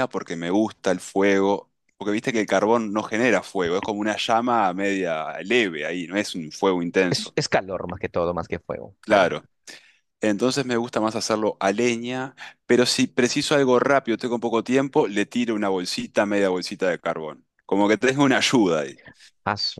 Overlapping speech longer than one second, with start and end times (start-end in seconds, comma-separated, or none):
none